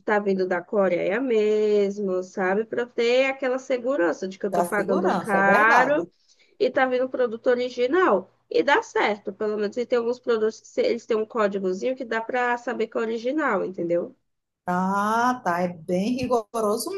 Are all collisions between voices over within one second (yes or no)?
no